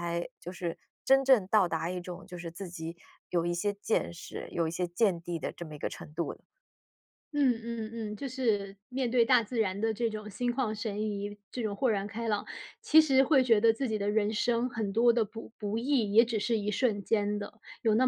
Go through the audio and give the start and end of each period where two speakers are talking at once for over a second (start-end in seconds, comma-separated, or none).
none